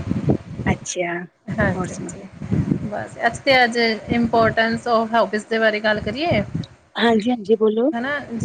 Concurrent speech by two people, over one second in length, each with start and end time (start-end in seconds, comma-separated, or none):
none